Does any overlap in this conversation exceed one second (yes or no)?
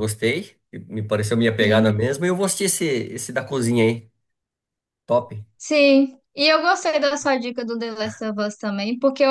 no